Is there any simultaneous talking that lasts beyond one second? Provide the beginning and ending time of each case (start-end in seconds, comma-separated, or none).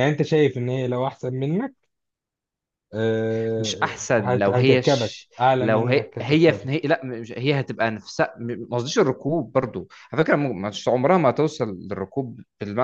3.6-6.7